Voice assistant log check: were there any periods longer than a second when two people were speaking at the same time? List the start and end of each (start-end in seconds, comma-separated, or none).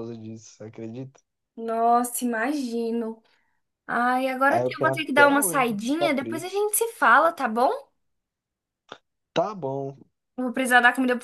4.5-6.6